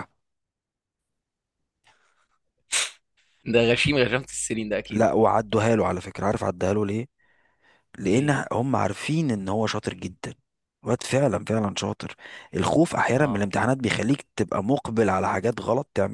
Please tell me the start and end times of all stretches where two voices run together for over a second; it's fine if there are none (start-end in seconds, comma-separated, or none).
none